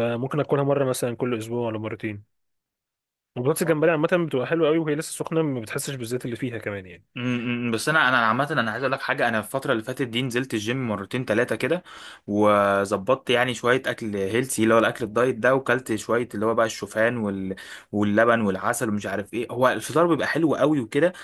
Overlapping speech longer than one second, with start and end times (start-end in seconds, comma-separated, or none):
none